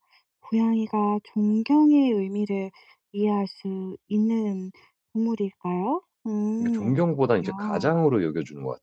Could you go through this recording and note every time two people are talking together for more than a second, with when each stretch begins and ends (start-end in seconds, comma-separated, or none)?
6.6-8.0